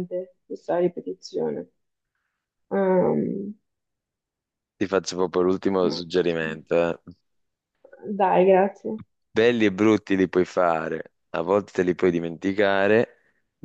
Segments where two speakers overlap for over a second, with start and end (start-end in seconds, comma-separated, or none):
none